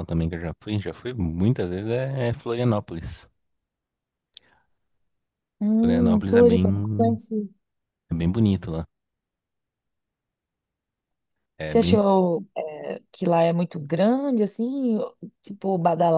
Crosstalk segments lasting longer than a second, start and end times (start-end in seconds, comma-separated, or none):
5.8-7.2